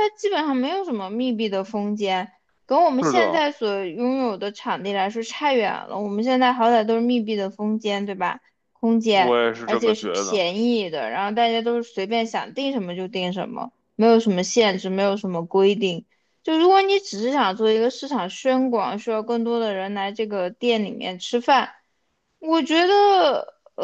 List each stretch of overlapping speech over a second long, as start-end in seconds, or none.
9.1-10.4